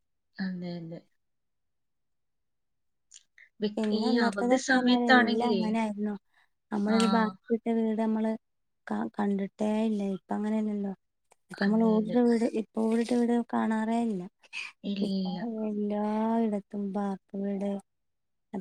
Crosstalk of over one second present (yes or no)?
yes